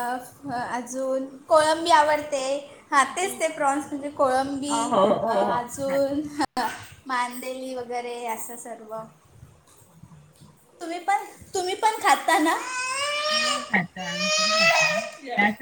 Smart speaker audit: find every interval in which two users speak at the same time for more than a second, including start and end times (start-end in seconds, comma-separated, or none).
4.7-6.2